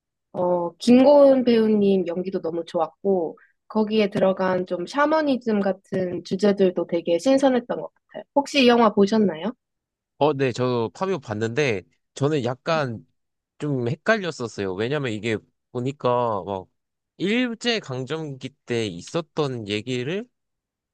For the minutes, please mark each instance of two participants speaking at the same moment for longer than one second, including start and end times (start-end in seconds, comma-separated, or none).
none